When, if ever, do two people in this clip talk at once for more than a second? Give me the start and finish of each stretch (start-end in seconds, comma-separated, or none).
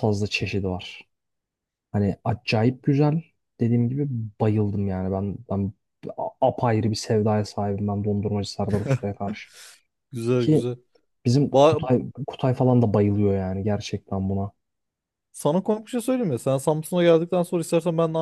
none